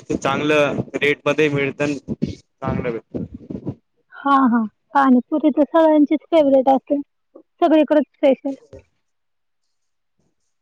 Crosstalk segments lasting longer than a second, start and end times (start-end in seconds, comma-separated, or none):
none